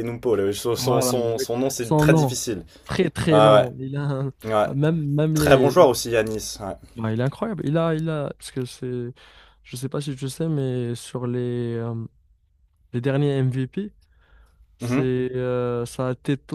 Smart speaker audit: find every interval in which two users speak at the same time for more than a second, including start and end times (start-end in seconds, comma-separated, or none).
0.8-2.3